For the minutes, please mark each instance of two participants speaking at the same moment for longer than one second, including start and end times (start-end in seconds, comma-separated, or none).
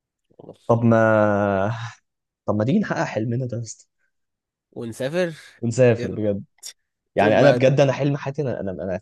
none